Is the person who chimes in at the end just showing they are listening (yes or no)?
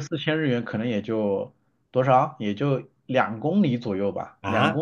no